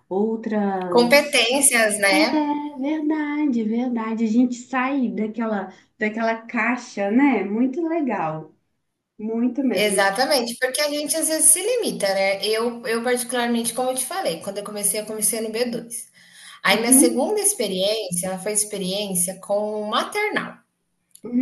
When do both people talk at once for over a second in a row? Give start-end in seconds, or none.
none